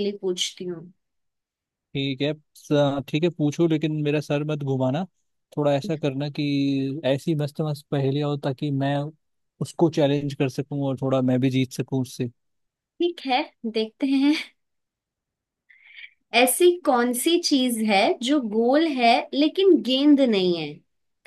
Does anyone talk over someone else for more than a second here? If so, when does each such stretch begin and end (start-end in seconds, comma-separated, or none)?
none